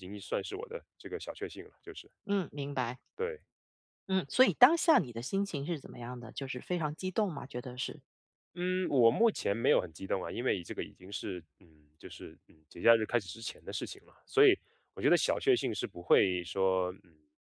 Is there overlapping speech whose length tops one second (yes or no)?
no